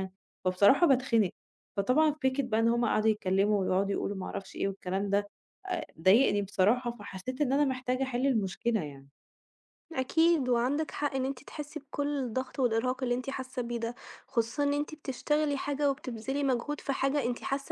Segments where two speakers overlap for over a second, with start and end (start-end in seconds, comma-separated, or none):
none